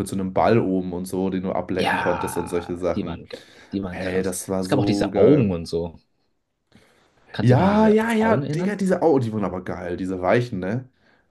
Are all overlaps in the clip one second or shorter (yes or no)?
no